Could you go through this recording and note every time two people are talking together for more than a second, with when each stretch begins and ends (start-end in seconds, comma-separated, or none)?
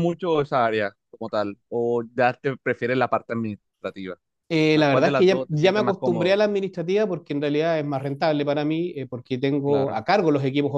4.5-6.4